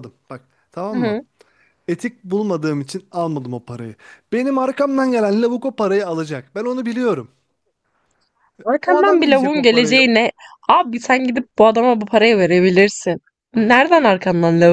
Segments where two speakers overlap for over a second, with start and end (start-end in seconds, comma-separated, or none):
8.8-10.1